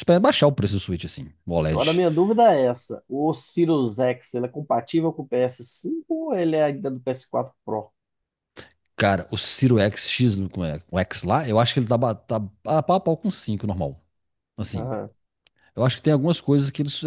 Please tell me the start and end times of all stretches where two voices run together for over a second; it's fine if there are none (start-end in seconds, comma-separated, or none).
none